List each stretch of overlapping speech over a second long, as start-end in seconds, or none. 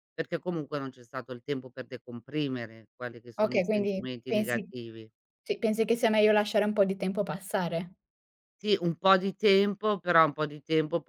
3.4-4.7